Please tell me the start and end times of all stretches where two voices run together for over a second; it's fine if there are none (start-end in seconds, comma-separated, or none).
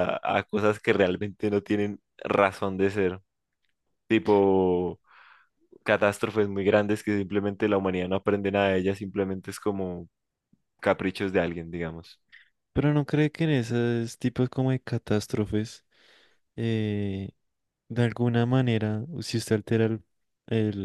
none